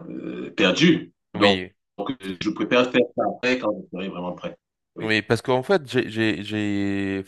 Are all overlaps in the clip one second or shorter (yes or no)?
yes